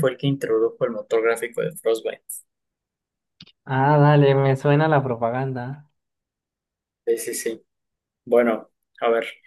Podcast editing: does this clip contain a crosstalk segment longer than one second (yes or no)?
no